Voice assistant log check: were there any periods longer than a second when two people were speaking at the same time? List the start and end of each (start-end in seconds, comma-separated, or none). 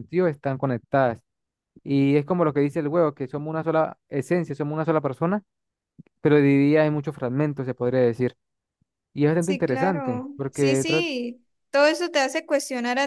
9.4-11.1